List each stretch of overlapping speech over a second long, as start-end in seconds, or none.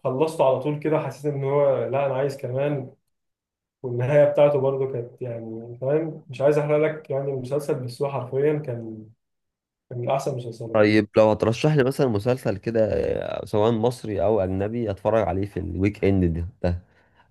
none